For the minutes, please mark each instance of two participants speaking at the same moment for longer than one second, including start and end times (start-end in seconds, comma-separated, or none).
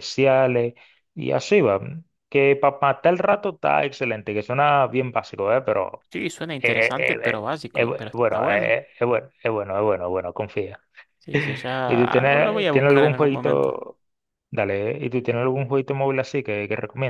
6.6-8.8, 11.9-13.7